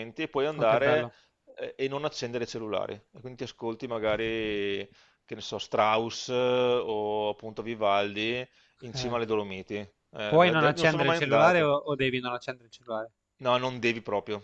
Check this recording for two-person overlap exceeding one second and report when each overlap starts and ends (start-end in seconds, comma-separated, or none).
10.3-11.7